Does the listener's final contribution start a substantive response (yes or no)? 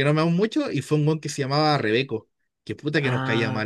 yes